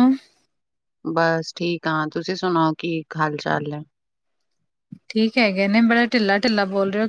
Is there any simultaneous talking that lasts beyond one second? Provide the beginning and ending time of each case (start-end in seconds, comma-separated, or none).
none